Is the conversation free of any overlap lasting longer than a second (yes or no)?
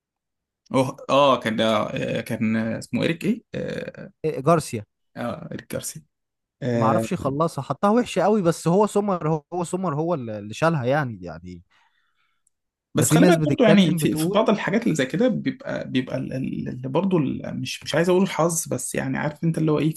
no